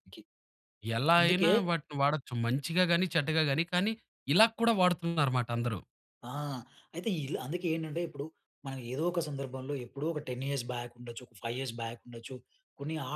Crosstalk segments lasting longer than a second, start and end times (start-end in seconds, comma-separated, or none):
none